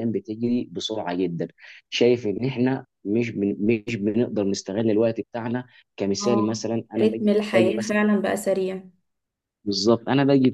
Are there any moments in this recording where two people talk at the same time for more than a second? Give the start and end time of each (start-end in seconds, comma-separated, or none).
6.2-8.0